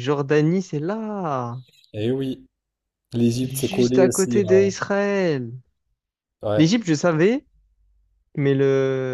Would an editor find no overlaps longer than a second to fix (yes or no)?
no